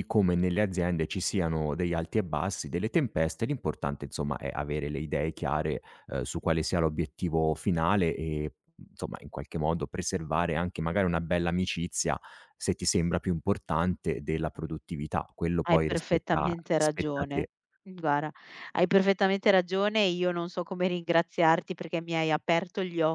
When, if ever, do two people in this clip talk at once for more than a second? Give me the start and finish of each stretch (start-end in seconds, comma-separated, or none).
15.7-17.5